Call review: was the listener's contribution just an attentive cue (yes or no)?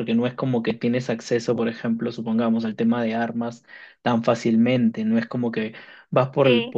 yes